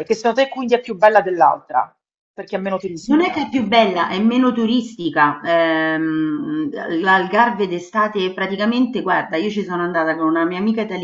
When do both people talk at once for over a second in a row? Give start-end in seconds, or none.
none